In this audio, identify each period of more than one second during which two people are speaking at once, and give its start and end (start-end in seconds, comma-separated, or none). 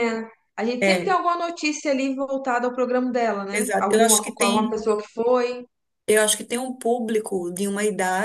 3.5-4.8